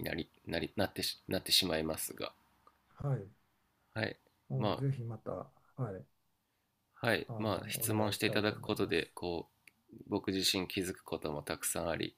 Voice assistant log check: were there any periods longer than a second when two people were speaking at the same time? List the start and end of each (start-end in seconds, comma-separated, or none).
7.3-9.1